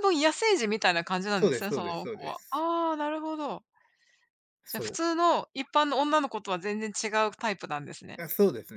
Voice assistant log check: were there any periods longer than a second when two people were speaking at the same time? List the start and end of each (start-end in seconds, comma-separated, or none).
1.3-2.6